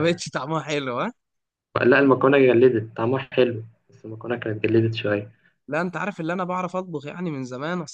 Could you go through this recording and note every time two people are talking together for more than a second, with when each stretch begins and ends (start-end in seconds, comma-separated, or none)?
none